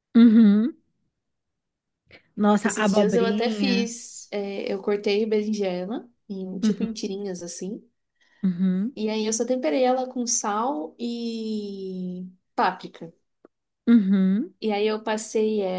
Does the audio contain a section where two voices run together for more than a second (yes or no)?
yes